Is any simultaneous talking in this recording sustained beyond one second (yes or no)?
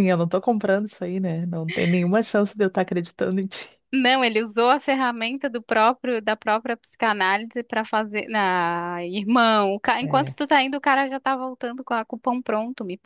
no